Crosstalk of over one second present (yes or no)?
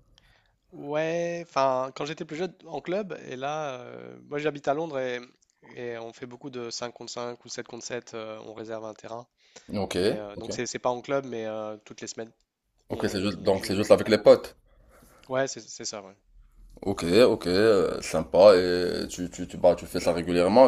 yes